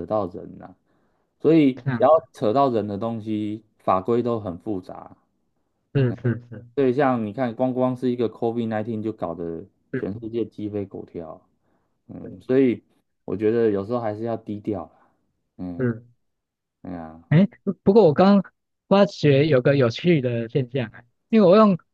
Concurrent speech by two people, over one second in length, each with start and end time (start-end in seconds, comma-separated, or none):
none